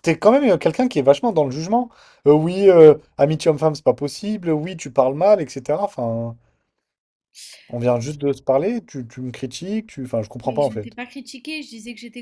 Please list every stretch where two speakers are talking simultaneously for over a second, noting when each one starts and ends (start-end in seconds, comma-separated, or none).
none